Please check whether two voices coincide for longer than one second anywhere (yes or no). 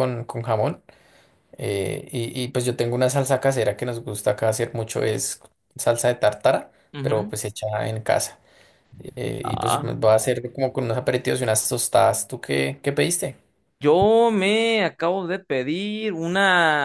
no